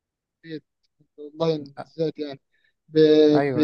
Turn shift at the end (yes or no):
no